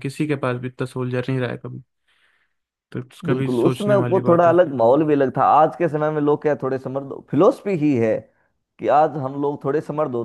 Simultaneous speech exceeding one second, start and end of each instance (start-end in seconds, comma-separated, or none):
3.2-4.5